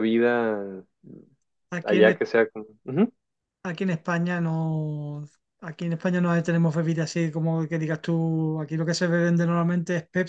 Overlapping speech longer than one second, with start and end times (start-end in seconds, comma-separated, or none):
none